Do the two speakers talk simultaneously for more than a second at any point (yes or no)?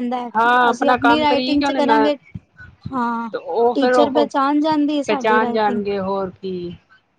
yes